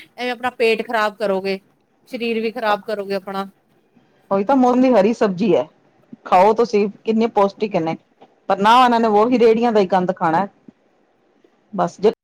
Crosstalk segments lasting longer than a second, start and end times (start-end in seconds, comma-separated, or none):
none